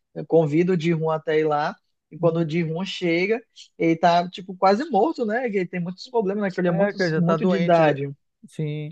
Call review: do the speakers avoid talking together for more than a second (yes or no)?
no